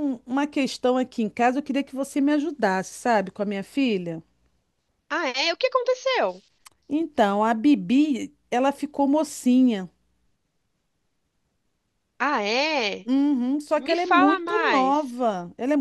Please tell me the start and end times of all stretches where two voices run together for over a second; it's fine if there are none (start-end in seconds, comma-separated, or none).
13.7-15.1